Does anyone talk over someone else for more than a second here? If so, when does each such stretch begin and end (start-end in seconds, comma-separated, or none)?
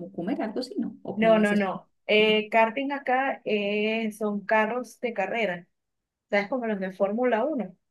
1.1-2.4